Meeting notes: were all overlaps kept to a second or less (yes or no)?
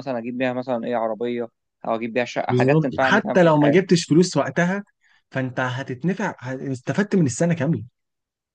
no